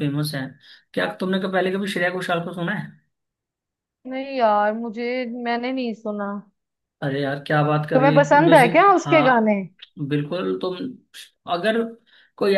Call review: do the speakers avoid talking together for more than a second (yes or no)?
no